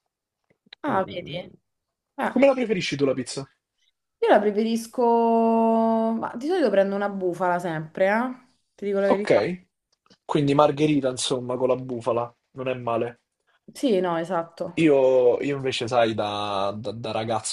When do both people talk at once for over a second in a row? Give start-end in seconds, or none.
none